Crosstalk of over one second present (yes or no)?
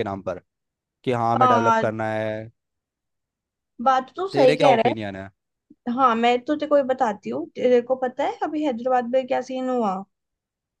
no